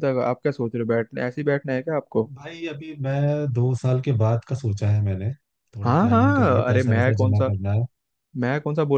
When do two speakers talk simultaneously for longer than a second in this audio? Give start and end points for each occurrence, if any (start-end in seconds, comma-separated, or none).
5.8-7.5